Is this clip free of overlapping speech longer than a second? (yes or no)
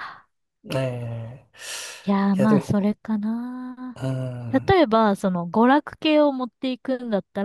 yes